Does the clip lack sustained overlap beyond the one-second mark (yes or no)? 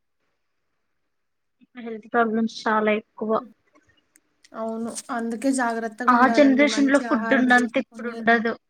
no